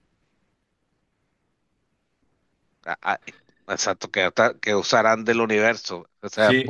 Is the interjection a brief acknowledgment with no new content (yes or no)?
no